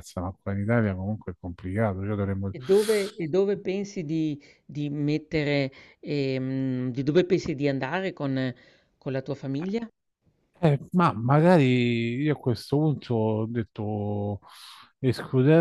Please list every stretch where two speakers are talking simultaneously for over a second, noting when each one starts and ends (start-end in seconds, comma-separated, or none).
none